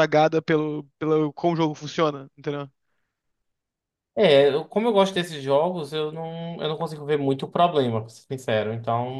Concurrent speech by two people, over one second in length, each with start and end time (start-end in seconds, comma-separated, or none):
none